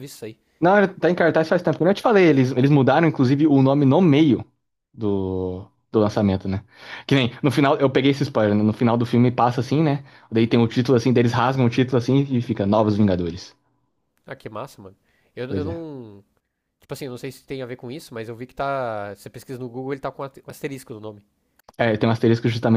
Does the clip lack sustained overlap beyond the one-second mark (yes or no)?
yes